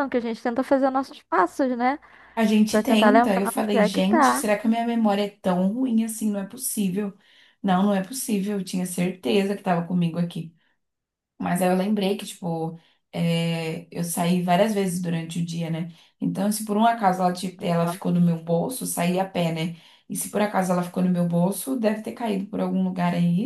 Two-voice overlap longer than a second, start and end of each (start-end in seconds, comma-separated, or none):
2.7-4.4